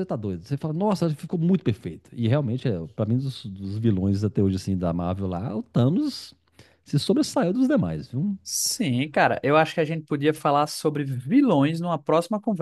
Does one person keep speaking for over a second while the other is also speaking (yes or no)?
no